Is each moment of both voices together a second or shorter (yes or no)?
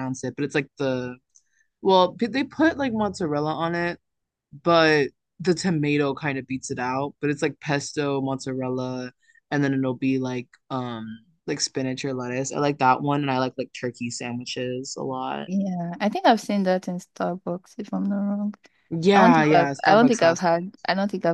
no